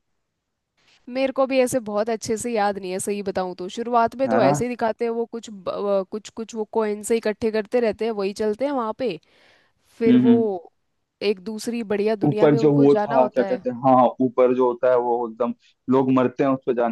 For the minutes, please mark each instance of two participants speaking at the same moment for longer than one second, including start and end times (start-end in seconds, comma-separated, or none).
12.2-13.6